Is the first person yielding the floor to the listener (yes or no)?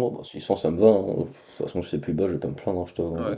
yes